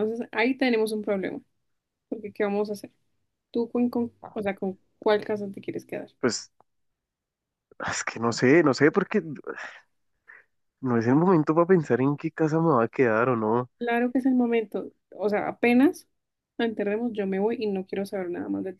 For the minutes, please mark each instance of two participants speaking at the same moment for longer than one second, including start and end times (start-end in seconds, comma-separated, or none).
none